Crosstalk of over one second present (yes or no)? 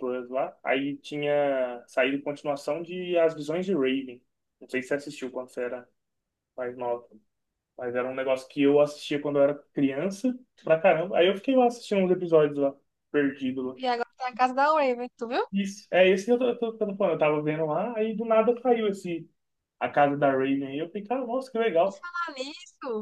no